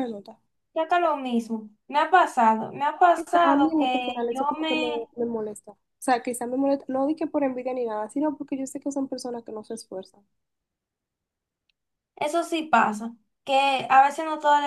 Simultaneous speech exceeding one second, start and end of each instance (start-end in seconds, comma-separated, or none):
3.1-5.1